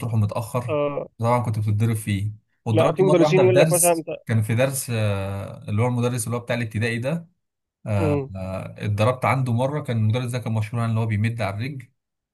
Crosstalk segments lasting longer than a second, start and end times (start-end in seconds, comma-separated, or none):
2.7-4.1